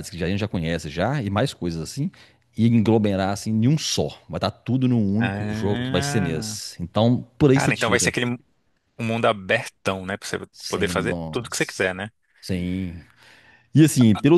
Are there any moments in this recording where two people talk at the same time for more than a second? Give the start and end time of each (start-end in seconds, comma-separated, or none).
5.2-6.6, 10.5-11.9